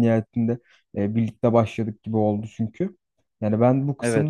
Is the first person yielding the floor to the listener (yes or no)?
no